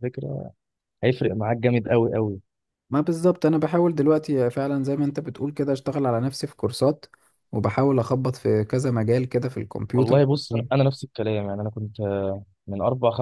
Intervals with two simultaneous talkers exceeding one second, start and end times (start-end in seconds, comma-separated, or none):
none